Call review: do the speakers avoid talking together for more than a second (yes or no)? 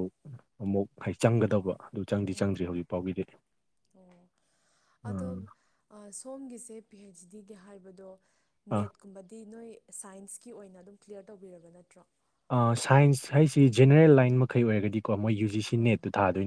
yes